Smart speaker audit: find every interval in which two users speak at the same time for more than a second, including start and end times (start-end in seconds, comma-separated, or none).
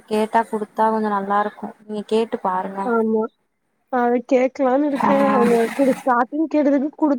none